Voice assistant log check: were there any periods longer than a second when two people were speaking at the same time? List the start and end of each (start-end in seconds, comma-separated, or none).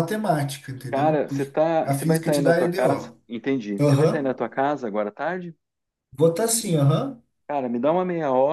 0.9-3.2